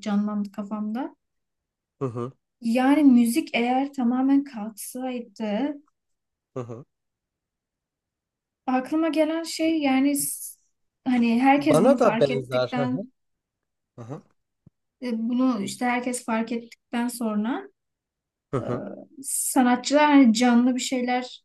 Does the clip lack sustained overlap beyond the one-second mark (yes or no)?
no